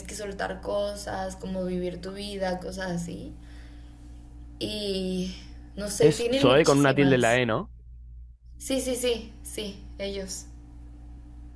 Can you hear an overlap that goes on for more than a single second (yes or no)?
yes